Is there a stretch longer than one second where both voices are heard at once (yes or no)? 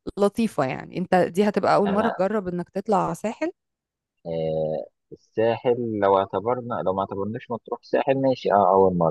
no